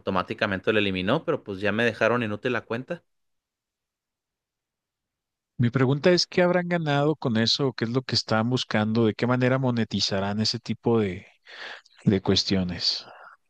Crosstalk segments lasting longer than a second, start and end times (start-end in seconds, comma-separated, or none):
none